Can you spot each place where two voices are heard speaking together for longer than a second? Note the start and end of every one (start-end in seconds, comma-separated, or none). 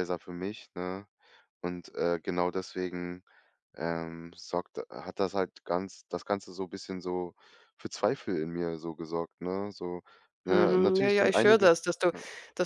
10.5-11.7